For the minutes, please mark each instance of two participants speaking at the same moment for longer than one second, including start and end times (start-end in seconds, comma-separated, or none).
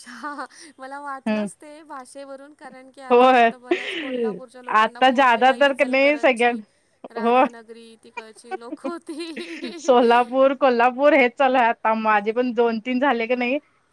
4.8-6.5